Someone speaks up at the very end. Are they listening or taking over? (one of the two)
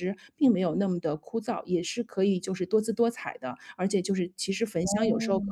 listening